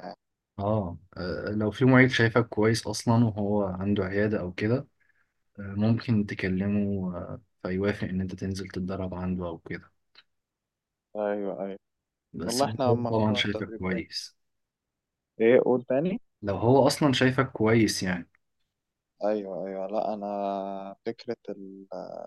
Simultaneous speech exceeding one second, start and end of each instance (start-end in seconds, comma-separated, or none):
12.4-14.0